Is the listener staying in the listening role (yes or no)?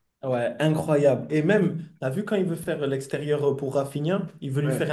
yes